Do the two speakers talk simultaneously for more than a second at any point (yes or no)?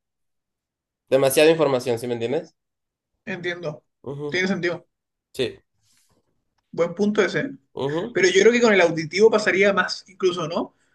no